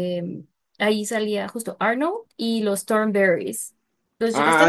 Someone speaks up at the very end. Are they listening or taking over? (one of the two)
taking over